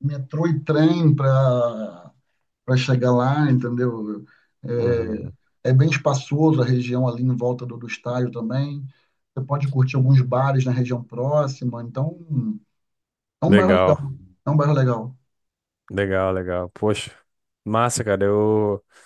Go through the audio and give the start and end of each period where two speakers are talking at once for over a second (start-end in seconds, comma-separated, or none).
none